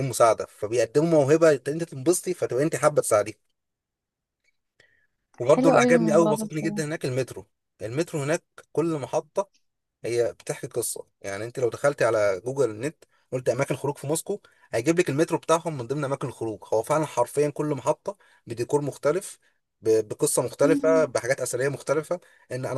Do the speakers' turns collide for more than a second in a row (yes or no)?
yes